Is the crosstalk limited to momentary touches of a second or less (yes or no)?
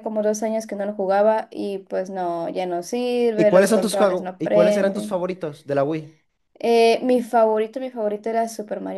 no